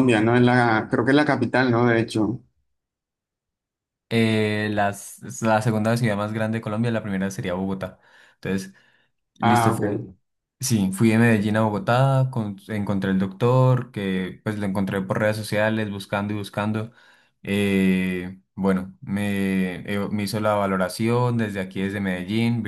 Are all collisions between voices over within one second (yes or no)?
yes